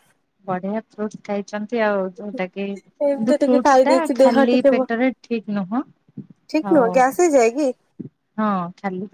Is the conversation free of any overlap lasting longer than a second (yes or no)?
no